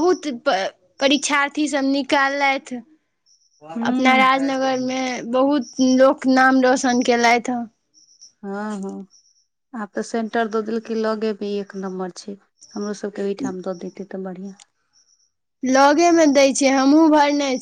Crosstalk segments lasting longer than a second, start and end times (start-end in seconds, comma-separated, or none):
none